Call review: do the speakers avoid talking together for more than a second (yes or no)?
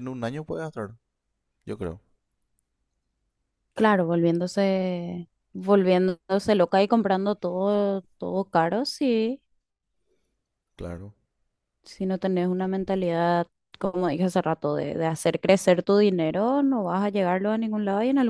yes